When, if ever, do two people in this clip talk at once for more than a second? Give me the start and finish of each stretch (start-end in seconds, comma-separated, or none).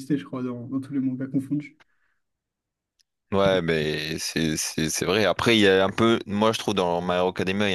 none